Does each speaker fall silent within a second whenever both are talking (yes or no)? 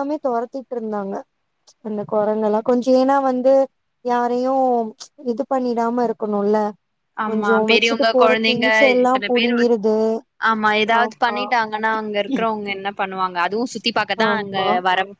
no